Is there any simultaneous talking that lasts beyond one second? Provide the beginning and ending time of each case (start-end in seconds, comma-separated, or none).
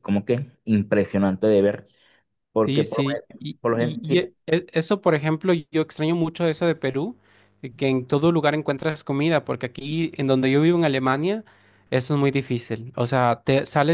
2.6-4.3